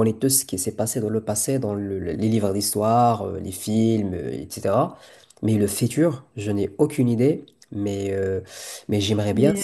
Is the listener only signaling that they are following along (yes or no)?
yes